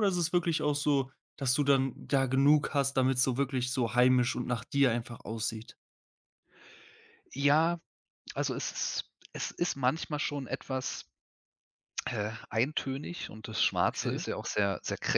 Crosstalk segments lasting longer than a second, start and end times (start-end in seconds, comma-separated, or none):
none